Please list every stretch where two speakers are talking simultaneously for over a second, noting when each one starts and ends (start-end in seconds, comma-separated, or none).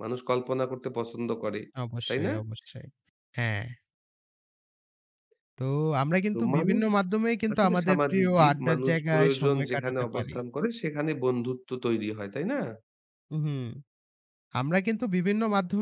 7.5-10.3